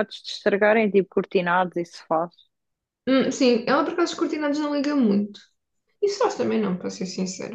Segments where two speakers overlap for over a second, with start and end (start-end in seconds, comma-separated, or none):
none